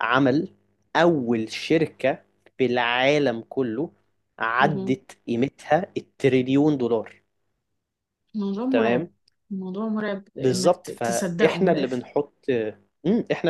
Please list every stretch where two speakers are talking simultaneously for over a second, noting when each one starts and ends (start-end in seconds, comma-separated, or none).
10.4-12.0